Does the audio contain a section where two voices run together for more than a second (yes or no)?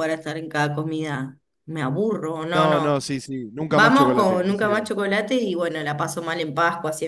yes